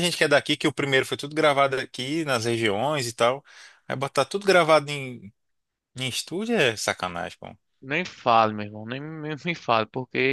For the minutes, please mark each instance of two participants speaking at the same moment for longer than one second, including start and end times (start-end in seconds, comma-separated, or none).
none